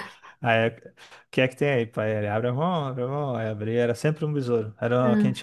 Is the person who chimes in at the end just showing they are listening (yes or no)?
yes